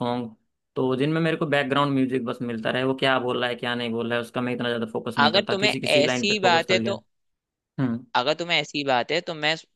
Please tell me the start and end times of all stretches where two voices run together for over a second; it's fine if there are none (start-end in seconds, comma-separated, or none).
5.2-6.9